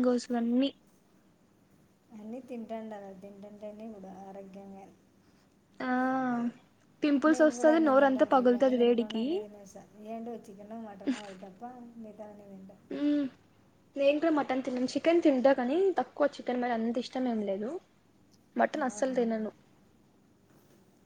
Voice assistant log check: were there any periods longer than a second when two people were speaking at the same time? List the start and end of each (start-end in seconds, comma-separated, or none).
7.3-9.2